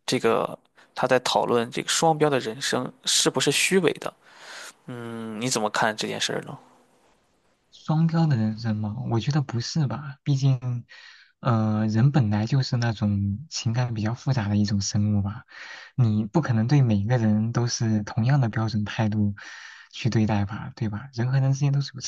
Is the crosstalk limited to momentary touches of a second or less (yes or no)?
yes